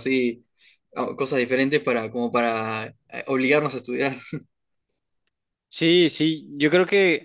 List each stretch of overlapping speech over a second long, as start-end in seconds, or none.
none